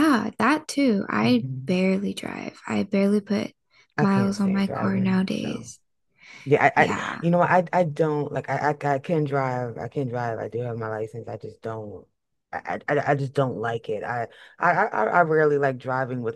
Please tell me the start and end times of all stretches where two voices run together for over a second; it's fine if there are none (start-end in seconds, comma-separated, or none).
4.0-5.7